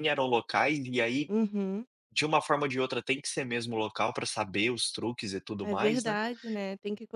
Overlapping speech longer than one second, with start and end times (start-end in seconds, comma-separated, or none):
none